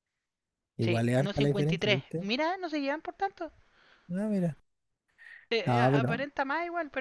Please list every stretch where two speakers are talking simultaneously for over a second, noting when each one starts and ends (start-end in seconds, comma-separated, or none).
0.8-2.3